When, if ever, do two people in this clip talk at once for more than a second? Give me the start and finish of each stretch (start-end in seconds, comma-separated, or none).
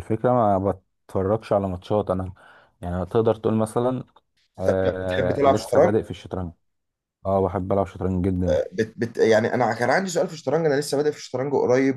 4.7-6.0